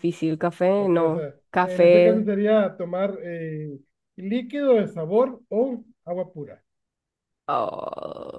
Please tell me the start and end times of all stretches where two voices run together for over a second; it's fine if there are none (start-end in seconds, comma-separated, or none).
0.8-2.3